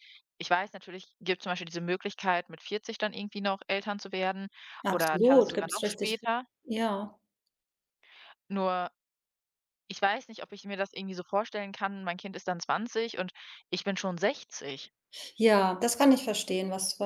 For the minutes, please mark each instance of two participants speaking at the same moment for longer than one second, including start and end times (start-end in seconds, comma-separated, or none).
4.9-6.2